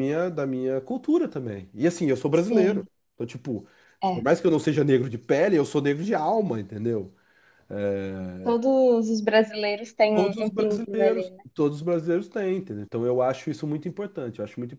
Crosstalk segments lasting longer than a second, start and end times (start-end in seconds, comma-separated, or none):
10.1-11.4